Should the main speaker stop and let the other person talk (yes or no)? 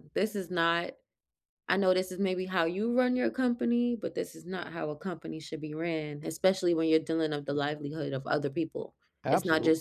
no